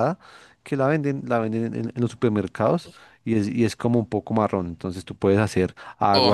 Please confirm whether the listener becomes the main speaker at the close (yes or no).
yes